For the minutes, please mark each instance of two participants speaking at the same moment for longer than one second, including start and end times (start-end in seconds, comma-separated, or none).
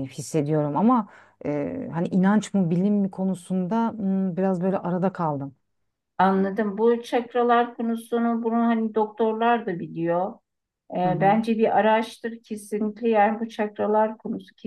none